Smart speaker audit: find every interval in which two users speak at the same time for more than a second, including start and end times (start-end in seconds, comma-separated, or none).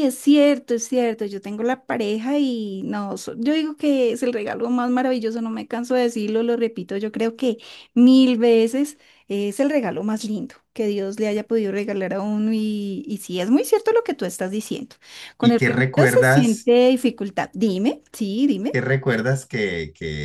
15.4-16.8